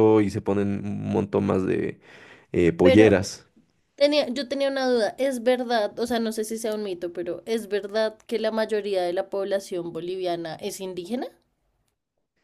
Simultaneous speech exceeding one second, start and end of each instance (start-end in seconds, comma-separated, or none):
none